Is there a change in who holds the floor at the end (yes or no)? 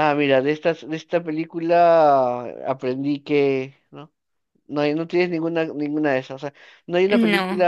no